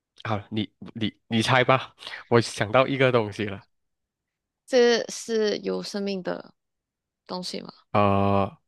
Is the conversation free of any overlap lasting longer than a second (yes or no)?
yes